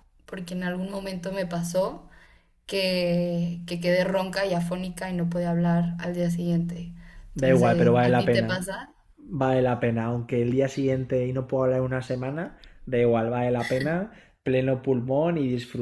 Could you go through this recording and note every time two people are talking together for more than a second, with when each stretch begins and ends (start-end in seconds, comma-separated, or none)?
7.3-8.7